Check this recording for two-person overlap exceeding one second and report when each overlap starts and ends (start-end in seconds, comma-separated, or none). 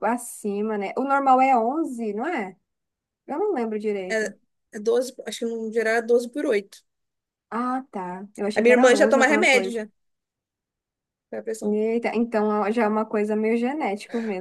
8.6-9.8